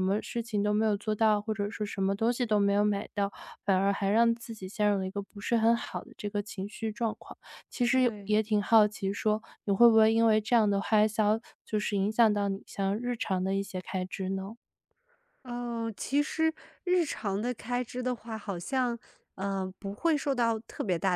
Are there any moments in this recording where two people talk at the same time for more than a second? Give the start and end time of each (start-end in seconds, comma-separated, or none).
none